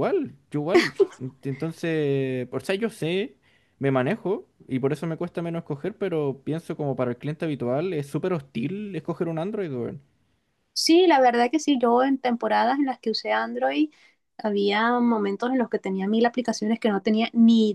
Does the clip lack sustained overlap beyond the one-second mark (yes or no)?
yes